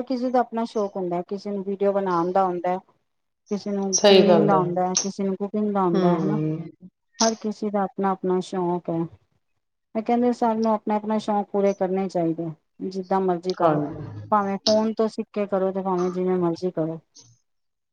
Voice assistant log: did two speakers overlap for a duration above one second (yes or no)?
no